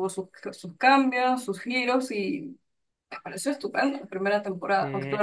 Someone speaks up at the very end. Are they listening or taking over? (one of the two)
listening